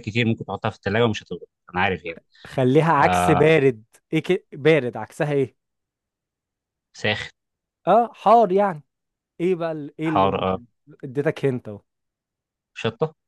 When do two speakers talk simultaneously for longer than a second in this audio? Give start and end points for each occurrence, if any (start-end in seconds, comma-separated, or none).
none